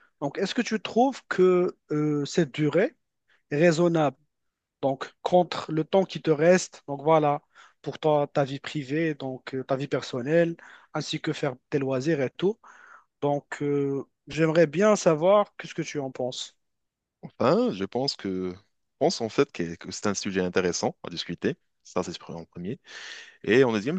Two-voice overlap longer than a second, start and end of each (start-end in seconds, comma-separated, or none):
none